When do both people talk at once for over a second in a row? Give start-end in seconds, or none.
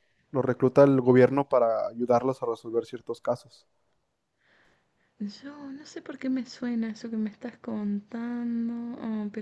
none